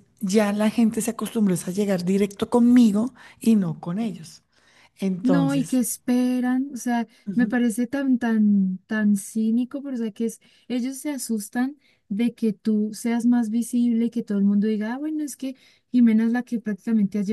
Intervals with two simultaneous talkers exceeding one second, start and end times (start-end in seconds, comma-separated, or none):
none